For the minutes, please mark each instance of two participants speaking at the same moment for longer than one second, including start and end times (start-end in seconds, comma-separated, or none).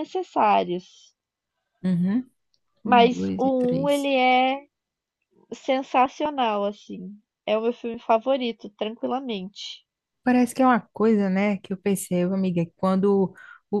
2.9-4.1